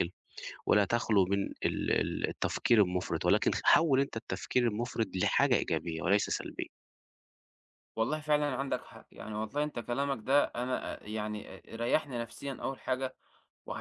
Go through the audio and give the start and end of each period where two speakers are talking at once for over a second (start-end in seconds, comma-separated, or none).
none